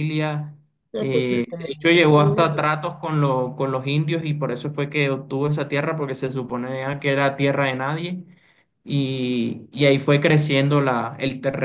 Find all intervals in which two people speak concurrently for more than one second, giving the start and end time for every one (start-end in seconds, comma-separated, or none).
0.9-2.7